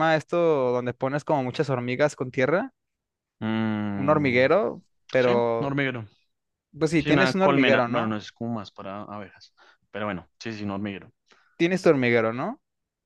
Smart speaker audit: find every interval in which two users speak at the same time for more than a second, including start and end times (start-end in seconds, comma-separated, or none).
7.0-8.2